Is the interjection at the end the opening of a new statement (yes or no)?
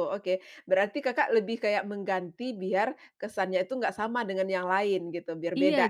yes